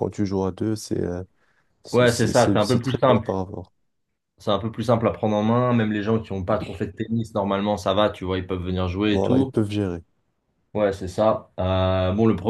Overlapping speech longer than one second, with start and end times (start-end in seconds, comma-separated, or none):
1.9-3.3